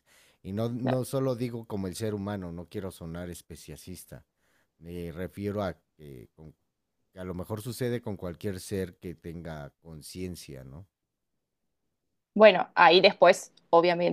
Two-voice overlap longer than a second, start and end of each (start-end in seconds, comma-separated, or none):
none